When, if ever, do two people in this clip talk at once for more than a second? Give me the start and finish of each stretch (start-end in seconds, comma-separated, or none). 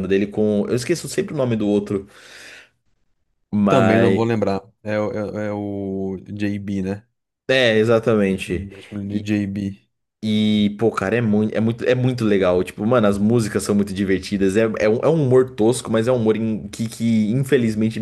none